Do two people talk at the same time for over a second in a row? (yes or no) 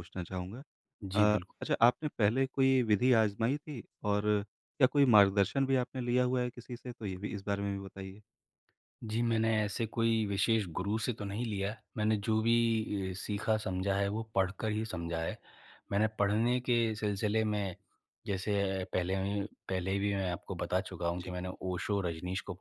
no